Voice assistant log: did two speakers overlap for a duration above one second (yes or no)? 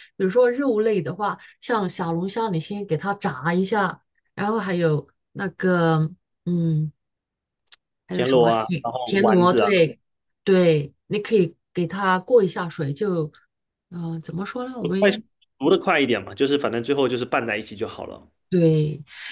yes